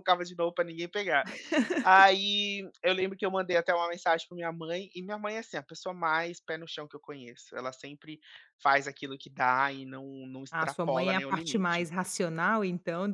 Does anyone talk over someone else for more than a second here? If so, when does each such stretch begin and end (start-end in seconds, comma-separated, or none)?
10.5-11.9